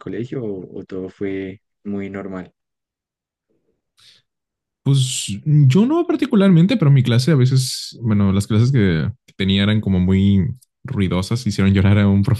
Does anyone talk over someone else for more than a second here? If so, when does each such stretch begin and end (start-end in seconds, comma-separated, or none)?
none